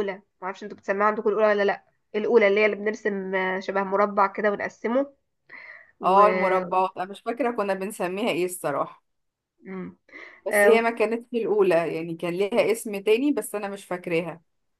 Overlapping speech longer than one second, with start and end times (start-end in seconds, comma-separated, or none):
none